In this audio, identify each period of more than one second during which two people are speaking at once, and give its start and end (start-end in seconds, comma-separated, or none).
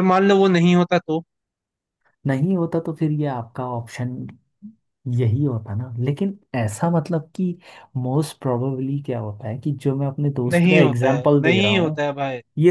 10.5-12.0